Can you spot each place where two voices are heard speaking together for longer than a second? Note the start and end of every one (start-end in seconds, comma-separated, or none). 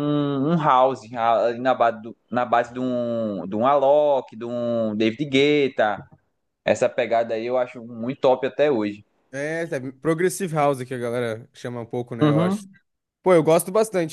none